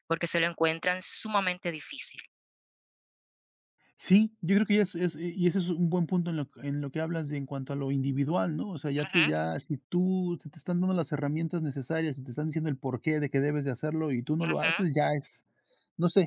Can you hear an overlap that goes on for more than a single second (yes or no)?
no